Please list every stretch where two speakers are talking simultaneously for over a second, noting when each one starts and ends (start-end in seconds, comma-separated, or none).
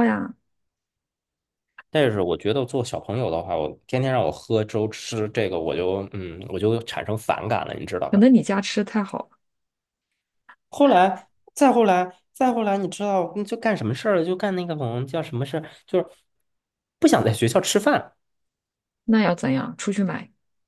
none